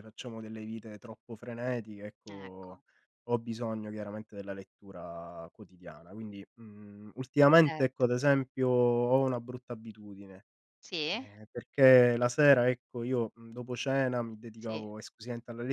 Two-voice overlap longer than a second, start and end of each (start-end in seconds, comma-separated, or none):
none